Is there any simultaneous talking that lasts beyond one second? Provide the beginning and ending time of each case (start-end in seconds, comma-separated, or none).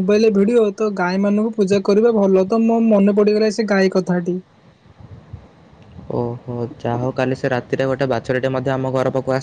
none